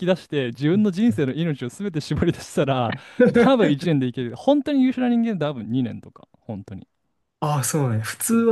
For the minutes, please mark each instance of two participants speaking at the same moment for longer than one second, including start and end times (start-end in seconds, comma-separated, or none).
none